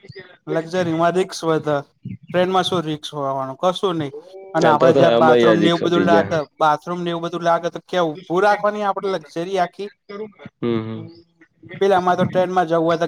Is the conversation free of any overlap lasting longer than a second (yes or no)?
no